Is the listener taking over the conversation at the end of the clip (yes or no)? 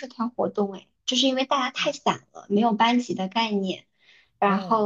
no